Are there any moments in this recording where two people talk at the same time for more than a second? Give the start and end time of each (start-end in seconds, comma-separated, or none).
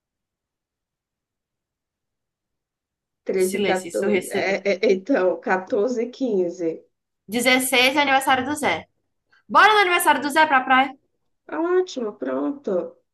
3.4-4.6